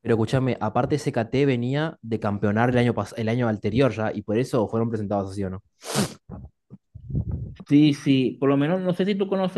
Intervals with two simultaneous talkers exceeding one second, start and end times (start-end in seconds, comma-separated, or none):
none